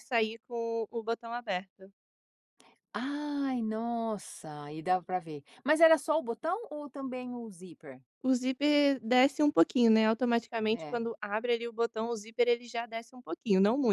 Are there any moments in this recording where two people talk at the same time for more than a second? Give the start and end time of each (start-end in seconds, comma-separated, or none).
none